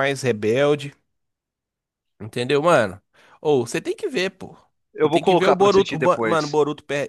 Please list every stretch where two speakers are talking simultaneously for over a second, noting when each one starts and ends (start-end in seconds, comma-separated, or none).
5.0-6.6